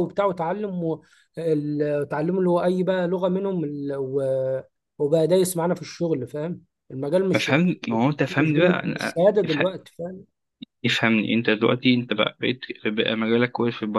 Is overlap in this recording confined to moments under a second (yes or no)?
yes